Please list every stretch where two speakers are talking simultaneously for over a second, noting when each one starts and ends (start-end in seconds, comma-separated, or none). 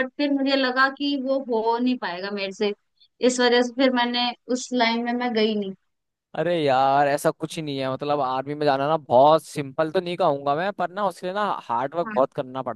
none